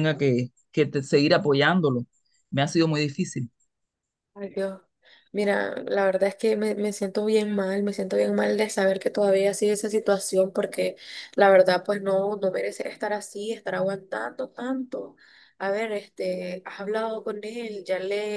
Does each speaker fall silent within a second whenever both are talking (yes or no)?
yes